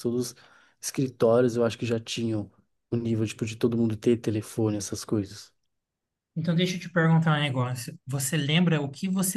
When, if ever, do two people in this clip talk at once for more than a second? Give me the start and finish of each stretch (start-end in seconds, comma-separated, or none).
none